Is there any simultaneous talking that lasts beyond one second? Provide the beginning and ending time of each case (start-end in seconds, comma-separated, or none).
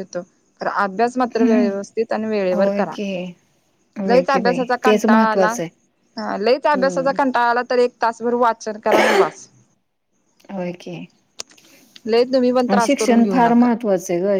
4.1-5.5